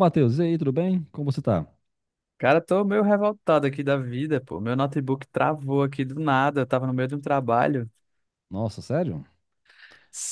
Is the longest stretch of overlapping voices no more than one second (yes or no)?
yes